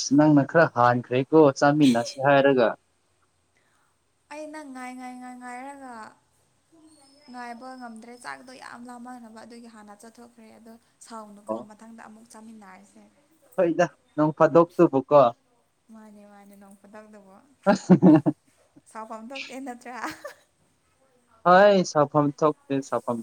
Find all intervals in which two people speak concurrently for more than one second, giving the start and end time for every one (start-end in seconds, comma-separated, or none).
none